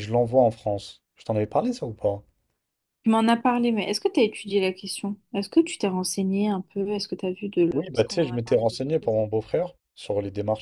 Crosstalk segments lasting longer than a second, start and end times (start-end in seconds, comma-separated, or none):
7.7-9.2